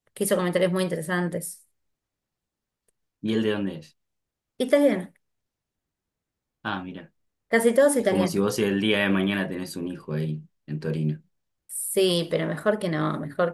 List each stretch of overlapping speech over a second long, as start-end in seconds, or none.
none